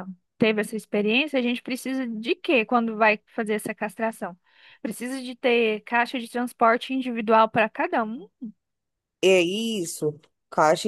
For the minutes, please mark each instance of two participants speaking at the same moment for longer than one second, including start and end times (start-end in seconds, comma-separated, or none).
none